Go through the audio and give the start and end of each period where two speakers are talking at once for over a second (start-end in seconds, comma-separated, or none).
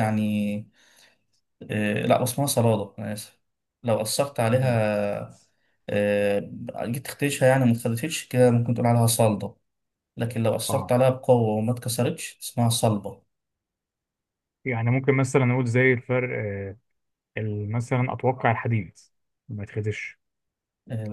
none